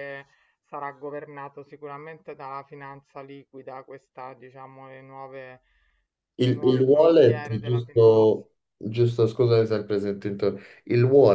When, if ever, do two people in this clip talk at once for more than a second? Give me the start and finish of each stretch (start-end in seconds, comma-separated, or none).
6.4-8.4